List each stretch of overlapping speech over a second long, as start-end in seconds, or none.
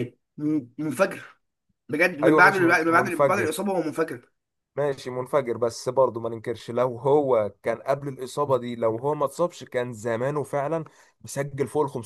2.2-3.5